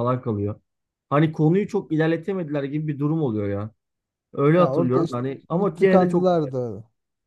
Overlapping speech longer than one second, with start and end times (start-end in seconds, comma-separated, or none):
4.5-6.5